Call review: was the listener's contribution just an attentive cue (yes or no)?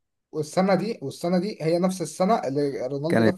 no